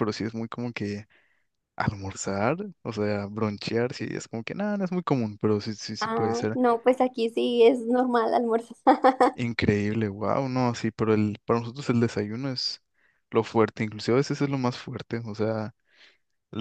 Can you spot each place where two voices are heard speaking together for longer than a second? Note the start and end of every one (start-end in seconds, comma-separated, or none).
none